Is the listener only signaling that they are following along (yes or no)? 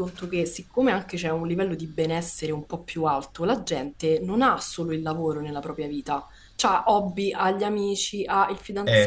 yes